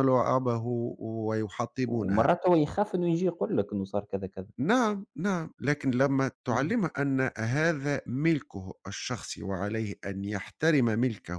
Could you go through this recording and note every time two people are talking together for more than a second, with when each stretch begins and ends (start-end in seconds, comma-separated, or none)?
none